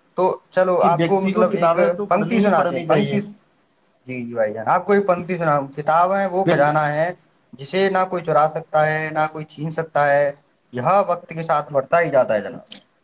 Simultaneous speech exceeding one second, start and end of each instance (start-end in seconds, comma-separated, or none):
0.8-3.2